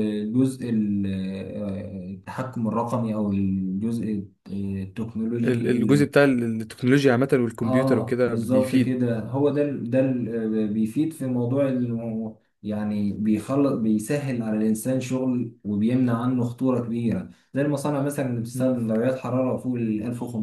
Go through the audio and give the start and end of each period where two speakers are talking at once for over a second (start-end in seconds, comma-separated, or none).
7.6-9.0